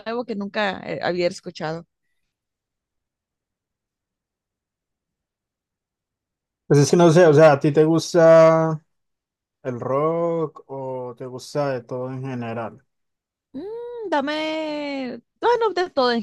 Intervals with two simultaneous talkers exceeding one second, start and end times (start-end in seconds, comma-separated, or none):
none